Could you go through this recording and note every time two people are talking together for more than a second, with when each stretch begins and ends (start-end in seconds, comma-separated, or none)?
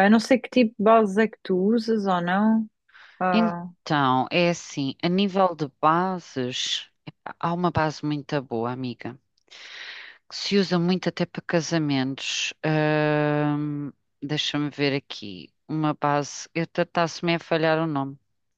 none